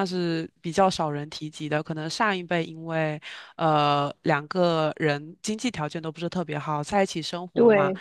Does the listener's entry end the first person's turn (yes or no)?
no